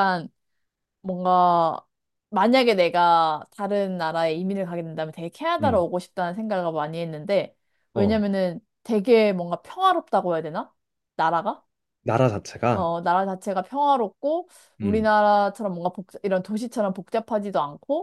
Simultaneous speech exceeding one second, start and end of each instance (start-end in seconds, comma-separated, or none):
none